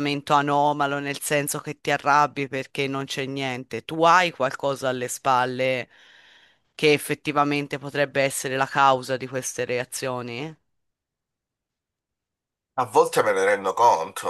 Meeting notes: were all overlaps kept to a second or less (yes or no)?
yes